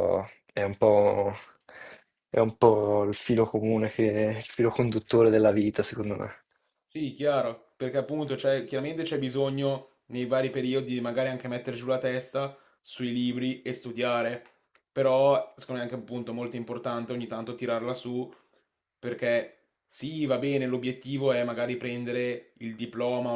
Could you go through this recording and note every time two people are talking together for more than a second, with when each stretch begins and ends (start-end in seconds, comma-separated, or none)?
none